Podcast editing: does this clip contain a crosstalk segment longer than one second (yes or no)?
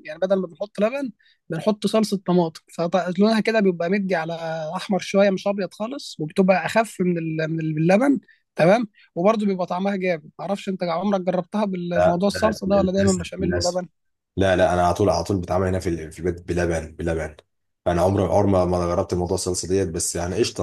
yes